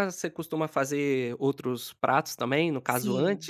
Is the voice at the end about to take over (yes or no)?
yes